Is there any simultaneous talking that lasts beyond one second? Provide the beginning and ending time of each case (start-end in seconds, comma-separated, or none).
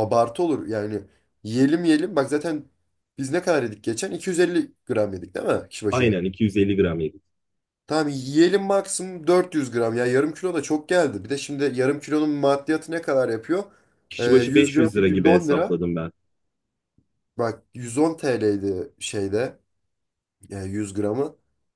14.2-15.8